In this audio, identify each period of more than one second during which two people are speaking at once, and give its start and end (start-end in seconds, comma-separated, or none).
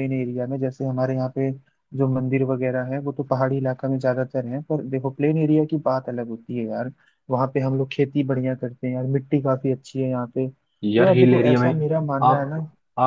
10.8-12.6